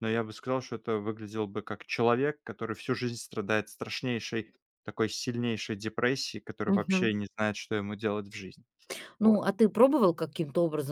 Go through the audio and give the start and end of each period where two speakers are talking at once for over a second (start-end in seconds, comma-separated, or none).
none